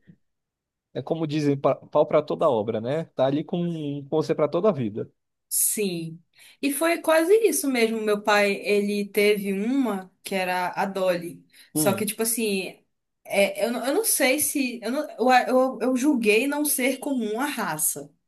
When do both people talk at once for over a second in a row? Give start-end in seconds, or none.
none